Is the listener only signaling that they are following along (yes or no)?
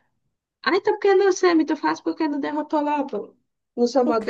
no